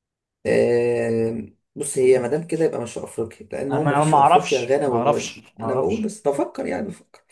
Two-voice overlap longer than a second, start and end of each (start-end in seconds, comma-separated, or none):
3.7-6.1